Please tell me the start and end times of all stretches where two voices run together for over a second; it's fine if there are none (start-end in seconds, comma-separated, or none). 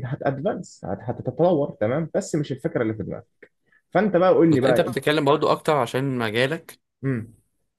none